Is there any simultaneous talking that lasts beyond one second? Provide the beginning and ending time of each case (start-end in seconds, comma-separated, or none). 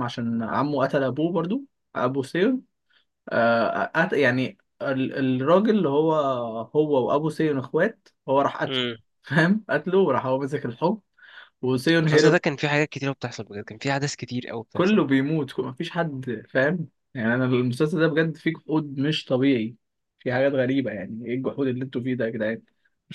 none